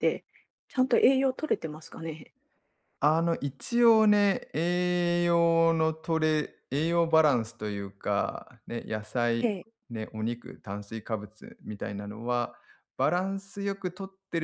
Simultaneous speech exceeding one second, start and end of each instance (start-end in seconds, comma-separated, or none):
none